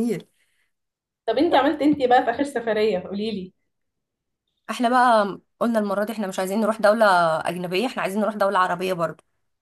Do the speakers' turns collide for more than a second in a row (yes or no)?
no